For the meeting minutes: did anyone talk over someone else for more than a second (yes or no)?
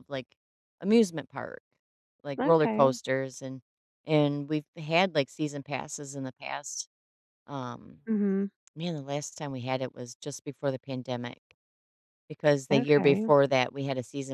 no